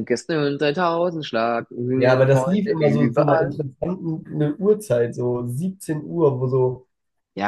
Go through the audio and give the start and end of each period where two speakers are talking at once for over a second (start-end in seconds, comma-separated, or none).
1.9-3.5